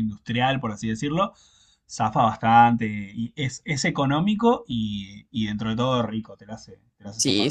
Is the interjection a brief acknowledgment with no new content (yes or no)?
no